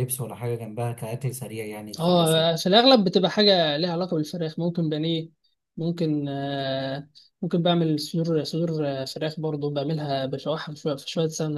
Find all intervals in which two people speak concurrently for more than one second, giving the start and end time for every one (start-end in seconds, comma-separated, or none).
none